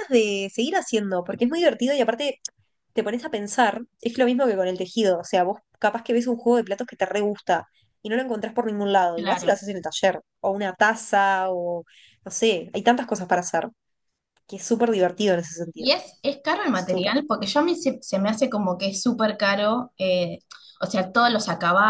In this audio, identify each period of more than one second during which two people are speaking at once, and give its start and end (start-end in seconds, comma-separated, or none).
none